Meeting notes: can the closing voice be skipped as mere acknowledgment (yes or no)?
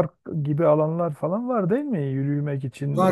no